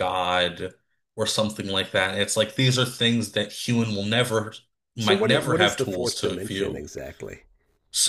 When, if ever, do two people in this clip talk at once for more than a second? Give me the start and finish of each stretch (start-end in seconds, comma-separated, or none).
5.0-6.9